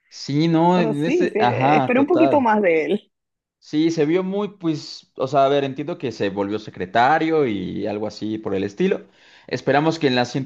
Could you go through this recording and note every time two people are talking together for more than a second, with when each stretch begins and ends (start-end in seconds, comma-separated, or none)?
0.7-2.5